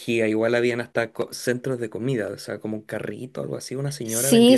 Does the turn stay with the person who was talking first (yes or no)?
no